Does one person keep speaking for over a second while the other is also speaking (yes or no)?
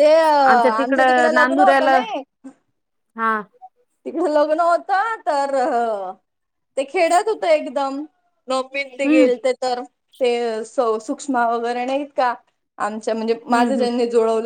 yes